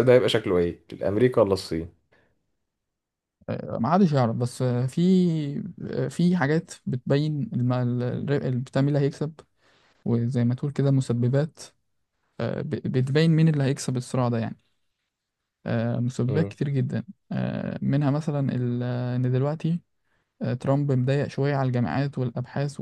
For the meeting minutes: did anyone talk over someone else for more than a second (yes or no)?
no